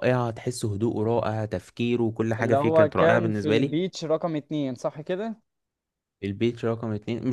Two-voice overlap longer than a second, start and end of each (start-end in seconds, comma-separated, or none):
2.4-3.8